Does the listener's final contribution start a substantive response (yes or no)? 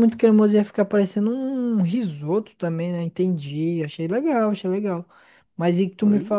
no